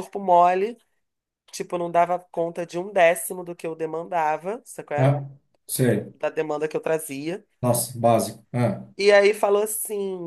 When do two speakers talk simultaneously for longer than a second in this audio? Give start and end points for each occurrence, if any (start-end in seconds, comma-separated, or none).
none